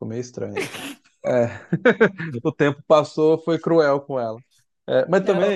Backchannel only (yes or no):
yes